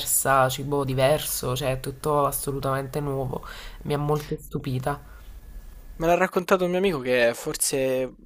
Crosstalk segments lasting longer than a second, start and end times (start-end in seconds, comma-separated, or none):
none